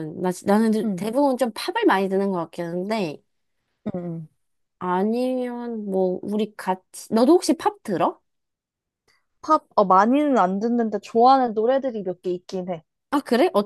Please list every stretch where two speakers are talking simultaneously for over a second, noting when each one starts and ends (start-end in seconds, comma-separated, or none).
none